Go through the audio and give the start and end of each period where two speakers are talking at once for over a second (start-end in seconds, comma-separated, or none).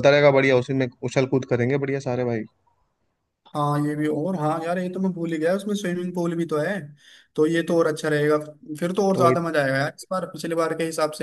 none